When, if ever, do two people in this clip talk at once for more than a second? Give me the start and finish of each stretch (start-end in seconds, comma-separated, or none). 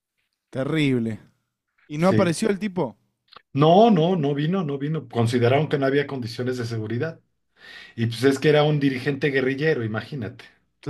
none